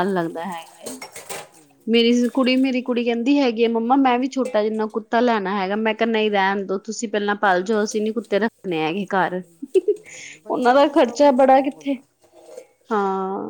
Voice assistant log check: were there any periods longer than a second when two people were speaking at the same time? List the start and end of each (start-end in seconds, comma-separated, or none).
10.6-11.9